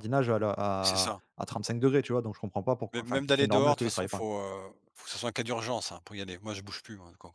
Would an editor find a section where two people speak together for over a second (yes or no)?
yes